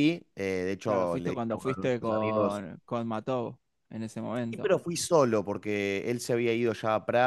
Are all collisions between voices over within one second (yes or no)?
no